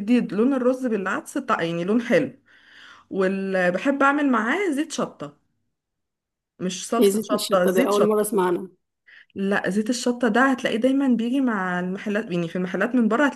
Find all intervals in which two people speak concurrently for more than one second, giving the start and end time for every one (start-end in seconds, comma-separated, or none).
7.0-8.3